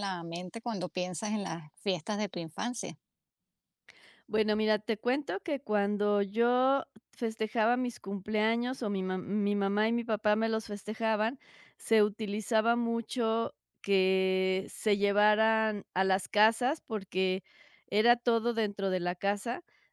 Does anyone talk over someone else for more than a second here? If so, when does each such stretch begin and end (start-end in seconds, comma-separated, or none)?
none